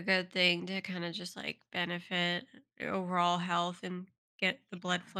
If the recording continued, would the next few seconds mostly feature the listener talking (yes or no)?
no